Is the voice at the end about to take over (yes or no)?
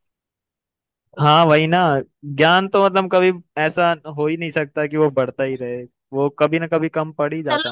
yes